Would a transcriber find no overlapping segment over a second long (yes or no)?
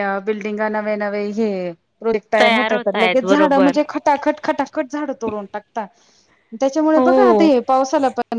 no